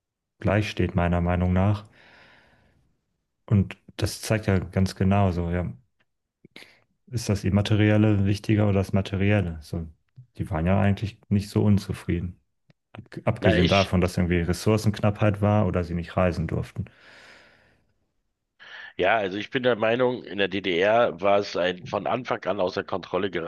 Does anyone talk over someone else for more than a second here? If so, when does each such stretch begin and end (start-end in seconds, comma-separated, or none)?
none